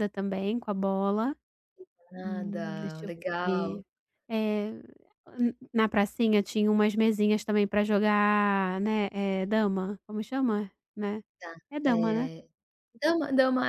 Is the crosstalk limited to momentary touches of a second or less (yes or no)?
no